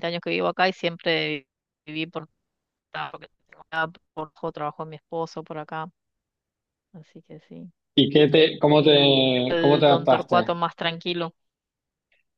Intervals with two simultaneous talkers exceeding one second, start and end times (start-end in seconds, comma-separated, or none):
8.8-10.5